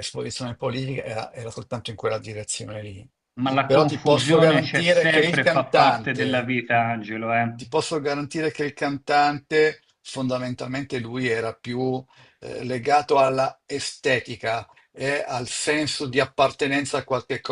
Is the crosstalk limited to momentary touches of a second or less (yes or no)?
no